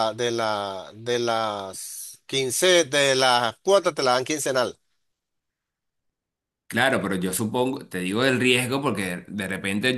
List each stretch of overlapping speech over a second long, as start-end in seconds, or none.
none